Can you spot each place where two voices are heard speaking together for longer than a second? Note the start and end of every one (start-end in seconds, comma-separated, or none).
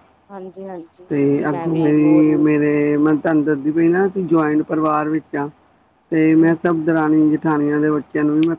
0.9-2.3